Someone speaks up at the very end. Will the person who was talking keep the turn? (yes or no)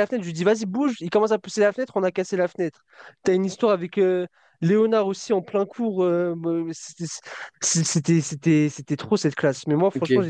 yes